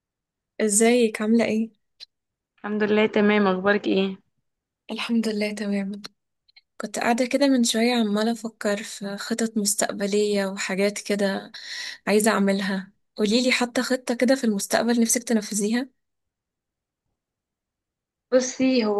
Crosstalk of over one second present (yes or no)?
no